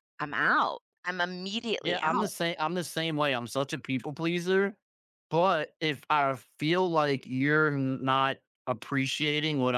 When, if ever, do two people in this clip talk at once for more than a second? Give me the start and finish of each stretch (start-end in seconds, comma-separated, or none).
none